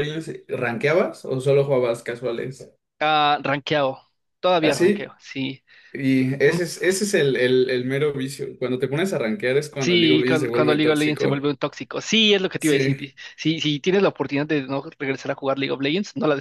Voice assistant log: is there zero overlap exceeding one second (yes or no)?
no